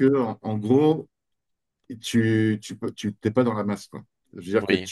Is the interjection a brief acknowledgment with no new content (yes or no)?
yes